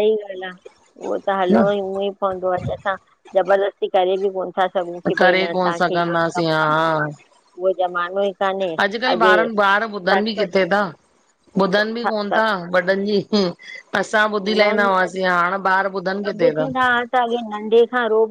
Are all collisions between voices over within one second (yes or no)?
no